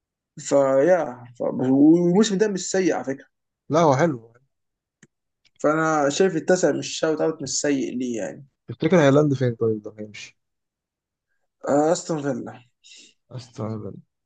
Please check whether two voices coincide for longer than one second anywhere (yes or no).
no